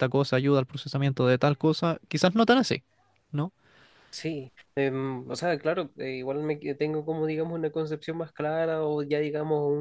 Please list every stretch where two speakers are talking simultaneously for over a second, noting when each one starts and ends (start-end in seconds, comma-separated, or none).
none